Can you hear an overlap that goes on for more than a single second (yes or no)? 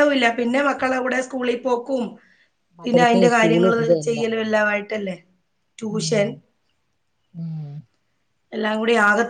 yes